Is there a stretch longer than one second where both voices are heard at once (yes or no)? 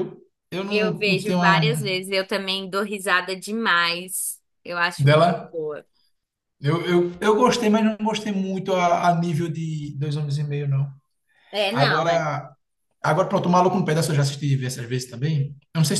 yes